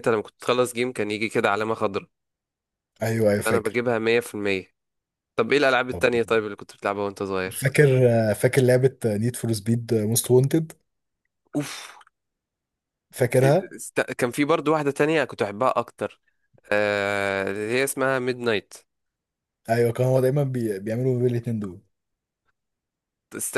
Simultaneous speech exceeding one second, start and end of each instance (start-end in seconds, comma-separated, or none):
none